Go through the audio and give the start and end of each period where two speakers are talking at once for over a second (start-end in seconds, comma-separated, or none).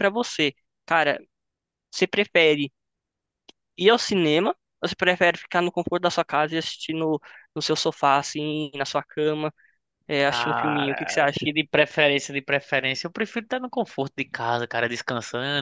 10.2-11.5